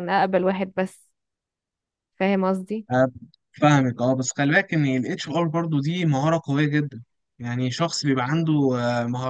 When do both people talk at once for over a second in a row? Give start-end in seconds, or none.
none